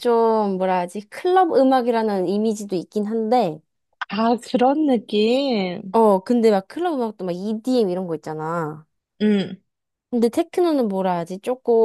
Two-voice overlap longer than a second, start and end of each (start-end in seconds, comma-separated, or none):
none